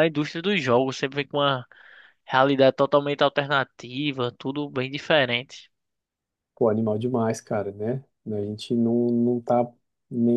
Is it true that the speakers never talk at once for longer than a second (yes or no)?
yes